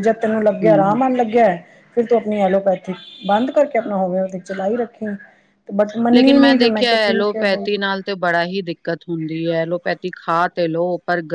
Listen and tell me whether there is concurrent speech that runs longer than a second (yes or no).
no